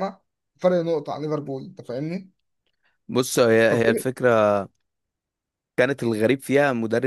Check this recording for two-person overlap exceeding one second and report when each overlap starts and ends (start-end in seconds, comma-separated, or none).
none